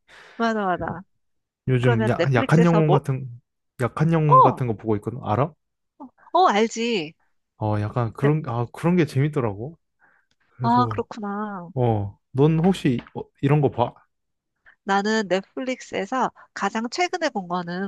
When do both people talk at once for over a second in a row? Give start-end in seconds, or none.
1.8-3.0